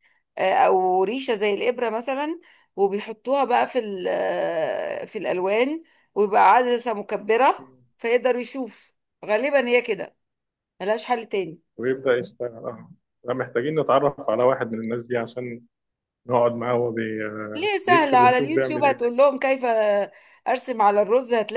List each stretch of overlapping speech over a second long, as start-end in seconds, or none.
17.6-19.0